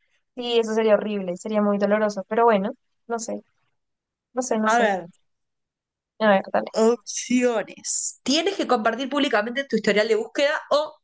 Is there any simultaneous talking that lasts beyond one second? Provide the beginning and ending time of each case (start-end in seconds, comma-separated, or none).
none